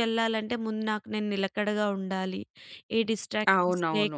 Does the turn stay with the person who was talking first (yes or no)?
no